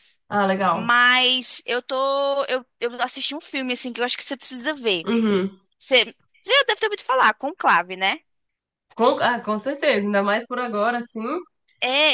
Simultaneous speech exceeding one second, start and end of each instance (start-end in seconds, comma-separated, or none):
none